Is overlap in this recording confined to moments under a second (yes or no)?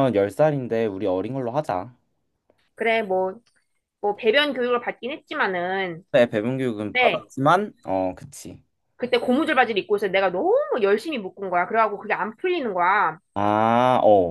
yes